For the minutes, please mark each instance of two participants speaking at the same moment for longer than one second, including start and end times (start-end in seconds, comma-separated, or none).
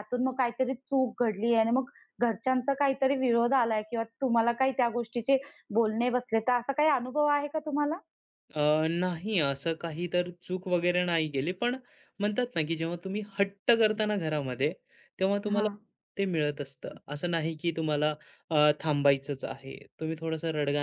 none